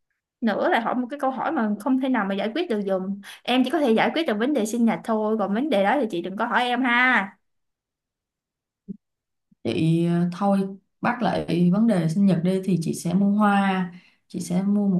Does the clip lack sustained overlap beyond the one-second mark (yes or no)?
yes